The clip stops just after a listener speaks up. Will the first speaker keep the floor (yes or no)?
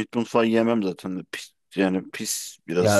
no